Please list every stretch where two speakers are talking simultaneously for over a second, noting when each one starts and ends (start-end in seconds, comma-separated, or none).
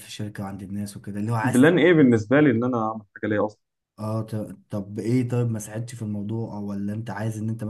none